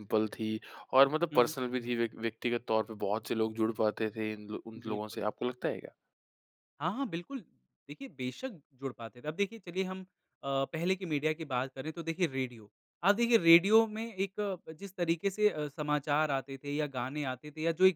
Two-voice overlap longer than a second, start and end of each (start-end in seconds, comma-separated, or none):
none